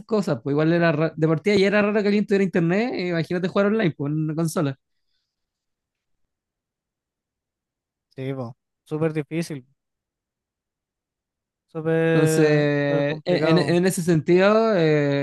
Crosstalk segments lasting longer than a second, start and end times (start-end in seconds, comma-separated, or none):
12.1-13.8